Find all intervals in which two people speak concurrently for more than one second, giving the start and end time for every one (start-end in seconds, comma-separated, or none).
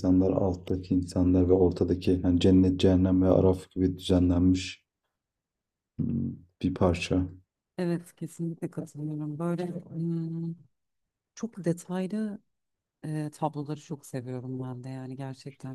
none